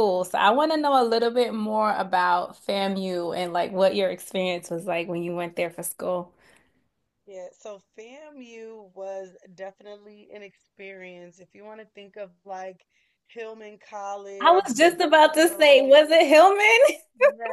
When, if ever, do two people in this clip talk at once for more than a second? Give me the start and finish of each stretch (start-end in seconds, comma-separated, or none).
14.4-16.0